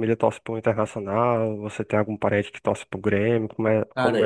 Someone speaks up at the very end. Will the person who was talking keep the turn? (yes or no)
no